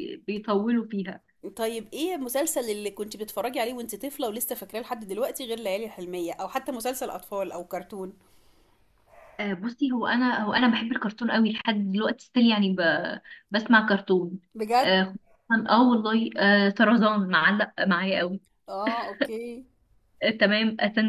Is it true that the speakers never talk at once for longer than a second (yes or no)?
yes